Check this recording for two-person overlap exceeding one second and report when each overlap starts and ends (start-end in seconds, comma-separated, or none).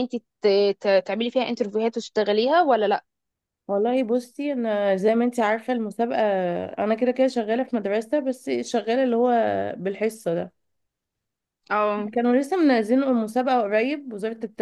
none